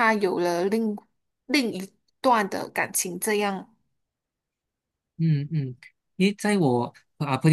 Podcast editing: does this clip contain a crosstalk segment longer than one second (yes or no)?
no